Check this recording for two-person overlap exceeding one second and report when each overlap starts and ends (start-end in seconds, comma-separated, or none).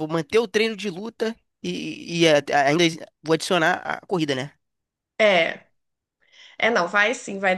none